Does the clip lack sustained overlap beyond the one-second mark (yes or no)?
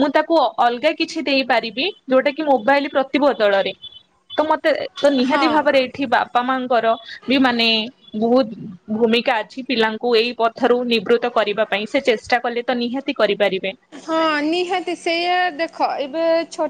yes